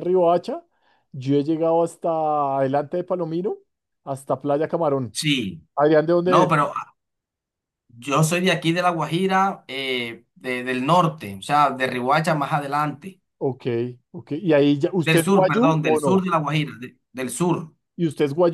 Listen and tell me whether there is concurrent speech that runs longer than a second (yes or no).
yes